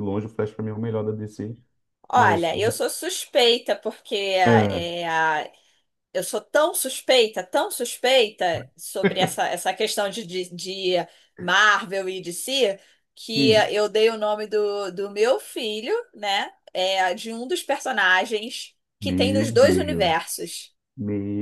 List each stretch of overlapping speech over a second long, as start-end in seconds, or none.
19.0-20.6